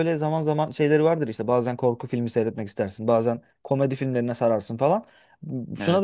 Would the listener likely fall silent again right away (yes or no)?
yes